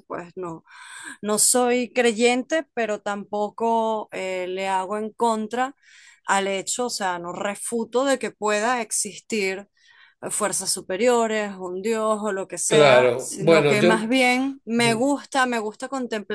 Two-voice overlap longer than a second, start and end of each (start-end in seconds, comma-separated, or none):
12.7-14.1